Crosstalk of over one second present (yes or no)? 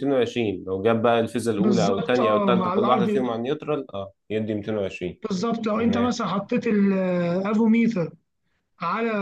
yes